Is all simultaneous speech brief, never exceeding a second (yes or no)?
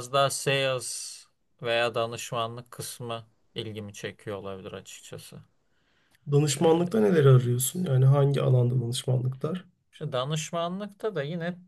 yes